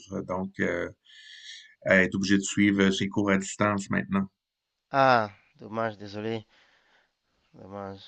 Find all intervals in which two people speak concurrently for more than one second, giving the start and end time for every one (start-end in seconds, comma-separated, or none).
none